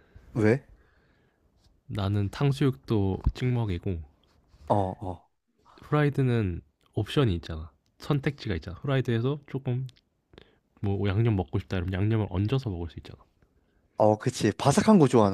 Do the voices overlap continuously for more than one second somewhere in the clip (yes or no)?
no